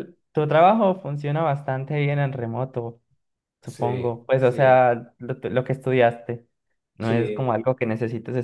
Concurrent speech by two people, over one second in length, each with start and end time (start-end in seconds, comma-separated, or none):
3.6-4.9